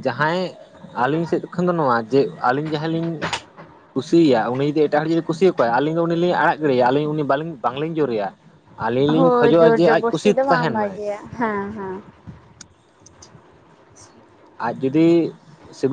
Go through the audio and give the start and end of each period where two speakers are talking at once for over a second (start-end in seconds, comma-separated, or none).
9.2-10.9